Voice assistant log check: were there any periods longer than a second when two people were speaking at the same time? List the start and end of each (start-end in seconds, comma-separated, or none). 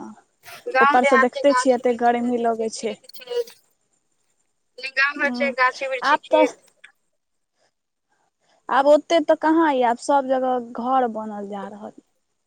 0.8-2.9